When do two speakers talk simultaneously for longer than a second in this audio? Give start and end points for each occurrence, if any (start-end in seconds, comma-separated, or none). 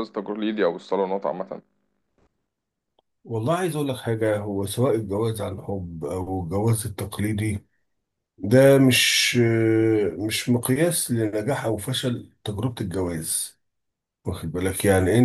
none